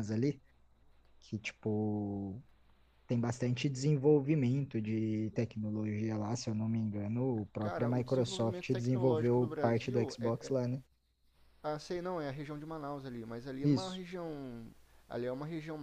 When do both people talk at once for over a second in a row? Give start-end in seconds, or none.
7.6-10.5